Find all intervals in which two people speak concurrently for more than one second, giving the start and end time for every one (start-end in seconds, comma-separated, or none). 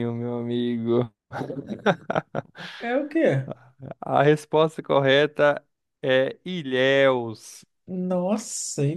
none